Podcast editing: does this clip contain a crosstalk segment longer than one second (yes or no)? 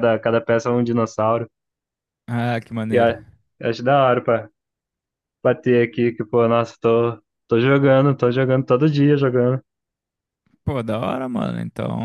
no